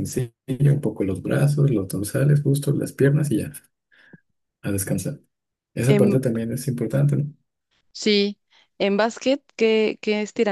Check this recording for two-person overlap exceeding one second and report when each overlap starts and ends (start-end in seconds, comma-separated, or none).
none